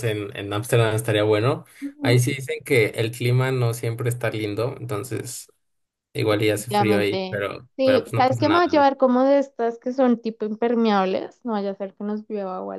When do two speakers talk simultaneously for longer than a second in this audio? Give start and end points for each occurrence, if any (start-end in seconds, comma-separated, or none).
6.3-8.8